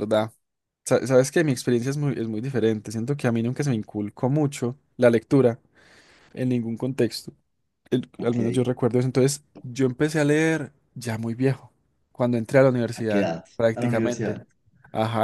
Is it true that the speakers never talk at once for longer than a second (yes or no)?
no